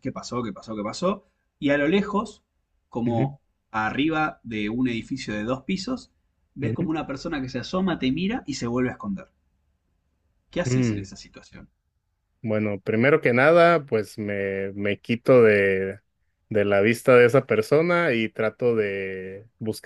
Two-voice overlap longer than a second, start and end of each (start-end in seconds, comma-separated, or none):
none